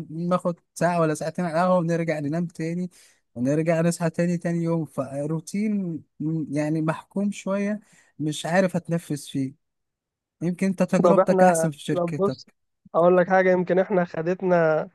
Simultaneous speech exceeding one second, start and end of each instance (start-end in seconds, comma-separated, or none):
11.0-12.5